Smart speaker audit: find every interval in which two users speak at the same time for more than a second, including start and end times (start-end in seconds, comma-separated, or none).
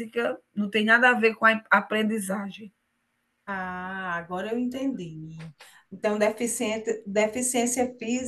none